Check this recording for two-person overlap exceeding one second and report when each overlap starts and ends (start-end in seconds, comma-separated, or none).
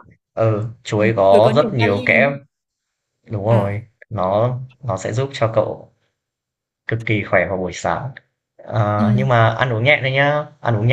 0.9-2.3